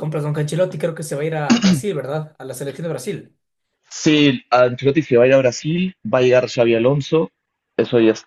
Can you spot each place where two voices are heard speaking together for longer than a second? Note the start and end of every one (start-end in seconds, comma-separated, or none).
none